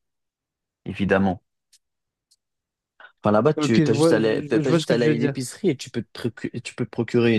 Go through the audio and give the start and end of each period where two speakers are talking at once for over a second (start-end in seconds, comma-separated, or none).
3.5-5.3